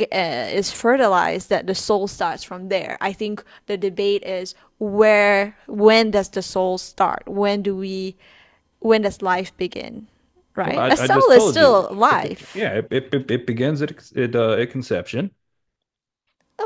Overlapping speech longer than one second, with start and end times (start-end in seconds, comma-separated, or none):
10.6-12.7